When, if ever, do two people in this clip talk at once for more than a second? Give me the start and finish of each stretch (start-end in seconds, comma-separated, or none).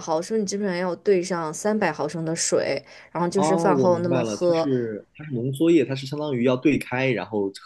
3.4-4.7